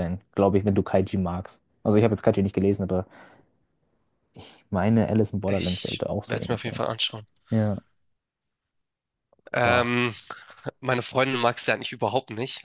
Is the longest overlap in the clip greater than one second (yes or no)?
yes